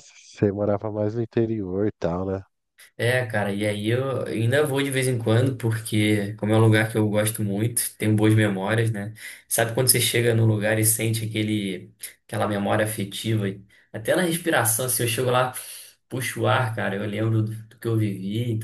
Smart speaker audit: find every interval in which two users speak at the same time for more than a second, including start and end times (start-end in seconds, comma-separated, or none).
none